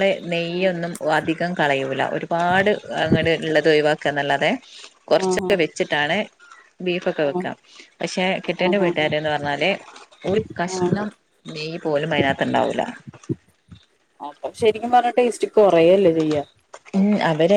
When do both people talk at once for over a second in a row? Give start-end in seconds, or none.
none